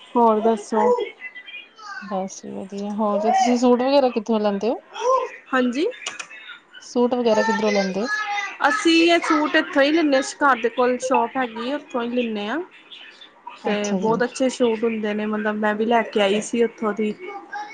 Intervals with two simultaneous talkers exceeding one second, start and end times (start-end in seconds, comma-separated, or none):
none